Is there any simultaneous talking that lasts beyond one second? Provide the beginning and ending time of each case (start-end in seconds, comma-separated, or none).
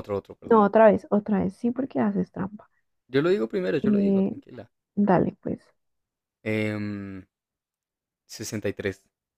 none